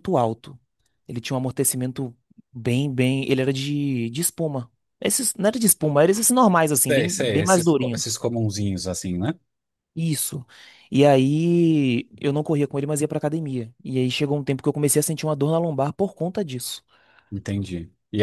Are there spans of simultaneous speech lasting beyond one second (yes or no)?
yes